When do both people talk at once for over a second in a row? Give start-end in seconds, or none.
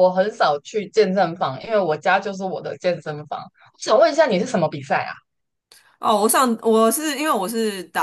none